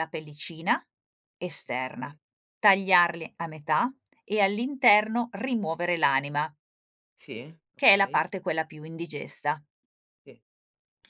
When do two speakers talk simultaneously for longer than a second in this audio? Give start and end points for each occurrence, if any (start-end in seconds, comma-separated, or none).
none